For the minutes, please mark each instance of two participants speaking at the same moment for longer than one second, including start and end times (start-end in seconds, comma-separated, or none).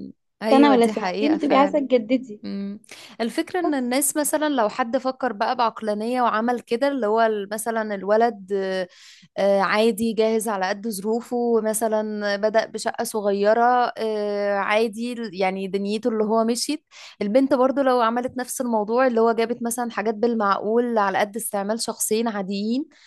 0.5-1.8